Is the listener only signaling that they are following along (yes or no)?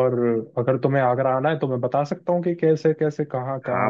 no